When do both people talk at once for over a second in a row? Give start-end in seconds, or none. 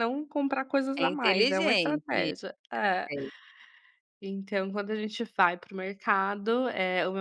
1.0-2.3